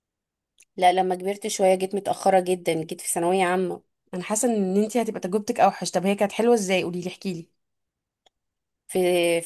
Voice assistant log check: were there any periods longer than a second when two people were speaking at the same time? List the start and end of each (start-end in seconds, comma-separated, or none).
none